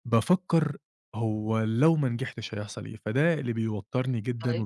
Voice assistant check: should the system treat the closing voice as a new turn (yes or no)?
no